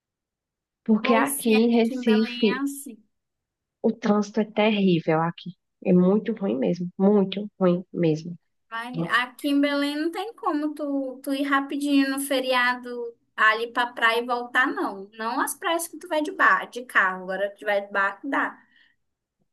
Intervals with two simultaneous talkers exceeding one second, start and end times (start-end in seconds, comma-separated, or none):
1.0-2.6